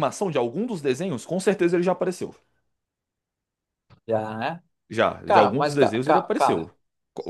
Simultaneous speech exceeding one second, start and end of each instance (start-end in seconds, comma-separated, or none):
5.2-6.7